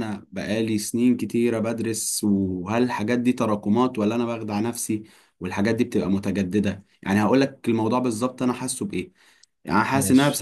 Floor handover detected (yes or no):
no